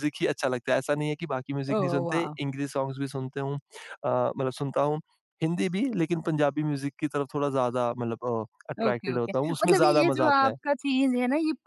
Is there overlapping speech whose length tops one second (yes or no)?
yes